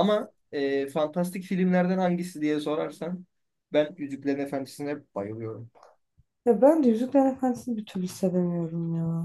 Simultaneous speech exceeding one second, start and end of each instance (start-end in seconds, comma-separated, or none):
none